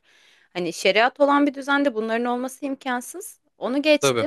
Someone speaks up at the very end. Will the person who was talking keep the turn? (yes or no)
yes